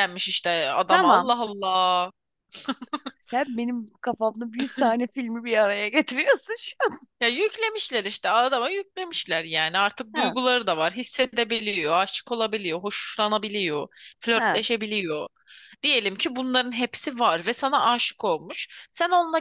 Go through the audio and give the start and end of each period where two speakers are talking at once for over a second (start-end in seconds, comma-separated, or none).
none